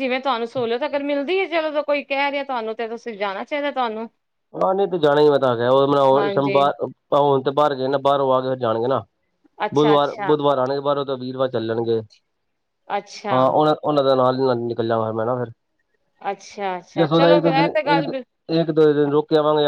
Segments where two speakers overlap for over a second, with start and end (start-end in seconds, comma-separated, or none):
none